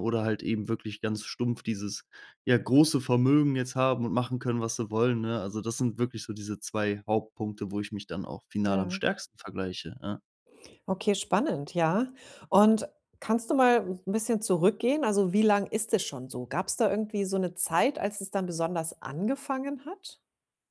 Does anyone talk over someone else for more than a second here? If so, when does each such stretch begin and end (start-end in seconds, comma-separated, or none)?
none